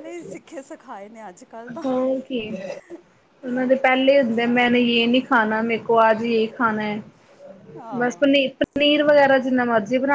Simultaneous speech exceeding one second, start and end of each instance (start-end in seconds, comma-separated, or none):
none